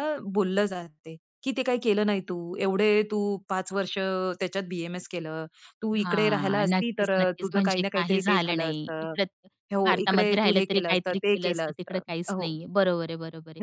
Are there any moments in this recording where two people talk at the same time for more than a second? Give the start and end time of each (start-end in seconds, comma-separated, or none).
6.0-9.1, 9.8-12.5